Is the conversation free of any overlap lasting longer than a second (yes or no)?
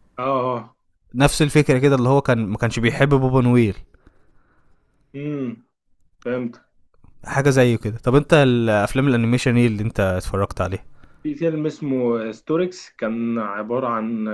yes